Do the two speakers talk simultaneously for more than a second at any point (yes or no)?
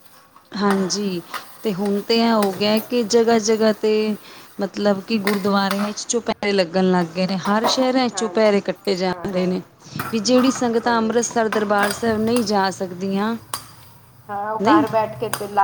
no